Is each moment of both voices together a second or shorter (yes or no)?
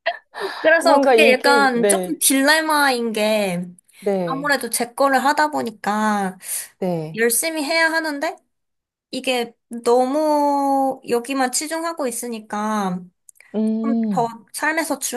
no